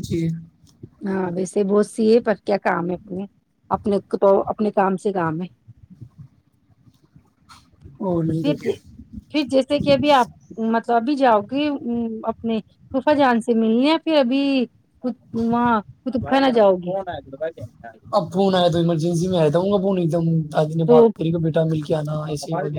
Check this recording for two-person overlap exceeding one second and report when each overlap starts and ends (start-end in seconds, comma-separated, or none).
none